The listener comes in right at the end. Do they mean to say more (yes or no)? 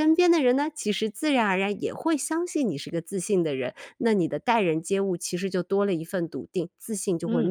yes